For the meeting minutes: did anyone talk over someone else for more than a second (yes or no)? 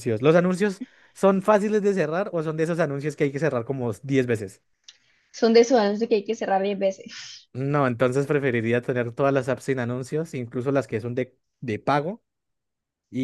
no